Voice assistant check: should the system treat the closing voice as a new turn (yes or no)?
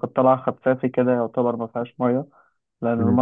no